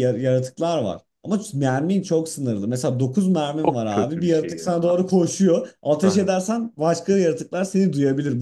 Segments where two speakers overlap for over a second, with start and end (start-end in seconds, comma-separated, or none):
3.6-4.9